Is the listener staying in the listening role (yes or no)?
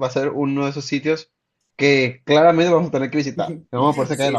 no